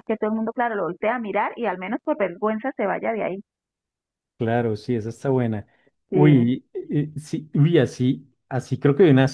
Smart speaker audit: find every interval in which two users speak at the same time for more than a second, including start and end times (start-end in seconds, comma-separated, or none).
none